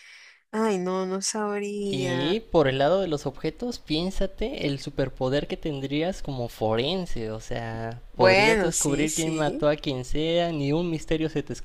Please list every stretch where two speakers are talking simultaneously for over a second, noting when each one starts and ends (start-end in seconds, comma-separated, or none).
8.1-9.7